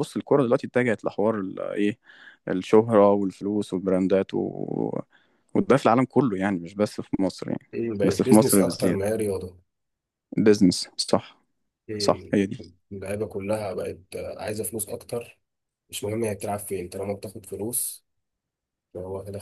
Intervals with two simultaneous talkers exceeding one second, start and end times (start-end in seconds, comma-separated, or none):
7.7-9.2